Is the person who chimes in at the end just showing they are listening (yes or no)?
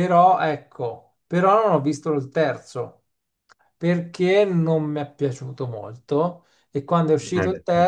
yes